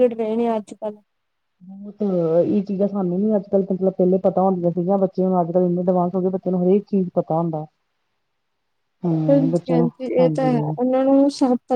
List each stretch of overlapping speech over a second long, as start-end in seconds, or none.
9.3-10.7